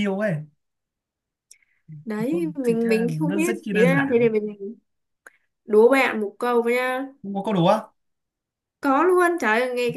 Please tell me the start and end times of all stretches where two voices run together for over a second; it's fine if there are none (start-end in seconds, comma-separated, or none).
2.3-4.3